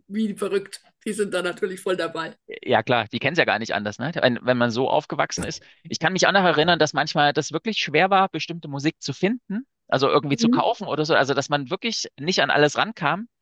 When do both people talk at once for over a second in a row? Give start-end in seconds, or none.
none